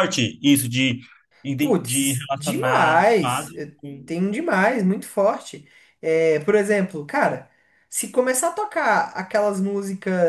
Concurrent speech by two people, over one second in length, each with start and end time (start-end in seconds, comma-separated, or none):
1.6-4.1